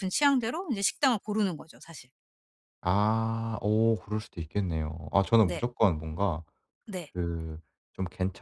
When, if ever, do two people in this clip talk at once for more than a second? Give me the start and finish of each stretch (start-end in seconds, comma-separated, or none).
none